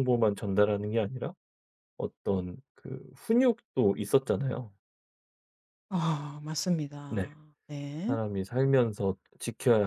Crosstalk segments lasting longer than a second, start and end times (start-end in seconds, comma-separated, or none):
none